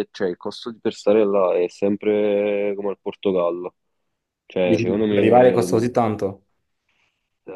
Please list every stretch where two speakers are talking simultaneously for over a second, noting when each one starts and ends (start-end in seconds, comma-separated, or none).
4.6-6.0